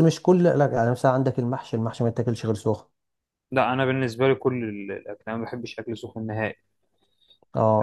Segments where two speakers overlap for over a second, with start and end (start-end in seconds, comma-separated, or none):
none